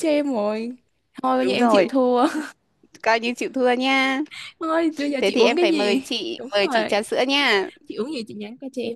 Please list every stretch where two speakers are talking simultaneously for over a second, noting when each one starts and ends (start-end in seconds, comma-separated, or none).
5.2-7.0